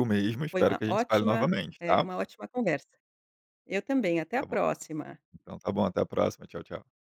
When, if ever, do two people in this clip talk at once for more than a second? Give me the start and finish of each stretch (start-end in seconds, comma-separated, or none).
0.5-2.1